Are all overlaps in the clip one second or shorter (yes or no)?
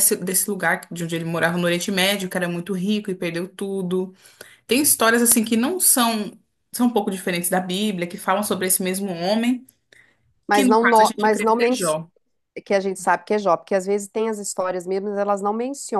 no